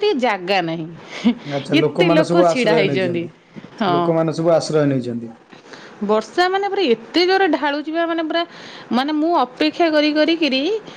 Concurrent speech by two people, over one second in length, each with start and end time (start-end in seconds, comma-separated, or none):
1.7-3.2